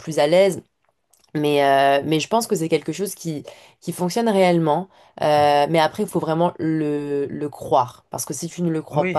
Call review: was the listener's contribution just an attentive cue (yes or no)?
no